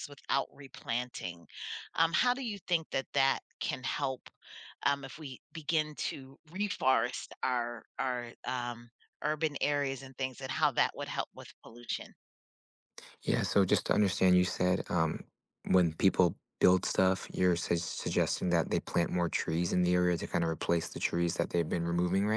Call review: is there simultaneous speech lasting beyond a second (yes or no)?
no